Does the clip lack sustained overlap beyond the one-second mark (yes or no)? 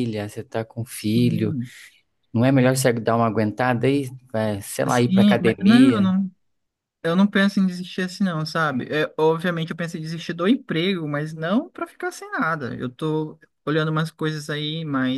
no